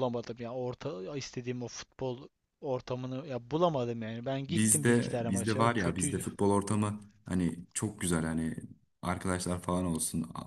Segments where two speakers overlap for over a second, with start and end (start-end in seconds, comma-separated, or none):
4.5-6.2